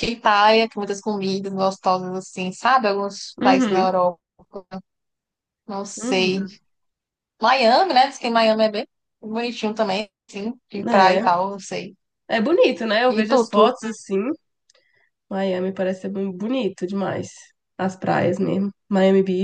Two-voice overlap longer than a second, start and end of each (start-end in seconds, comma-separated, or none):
none